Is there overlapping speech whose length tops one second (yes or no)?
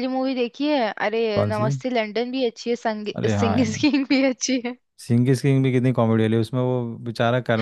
no